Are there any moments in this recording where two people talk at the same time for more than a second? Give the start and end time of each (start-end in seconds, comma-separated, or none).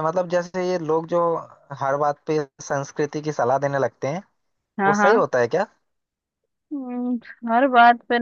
none